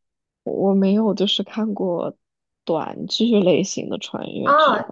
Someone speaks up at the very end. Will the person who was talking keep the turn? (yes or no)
no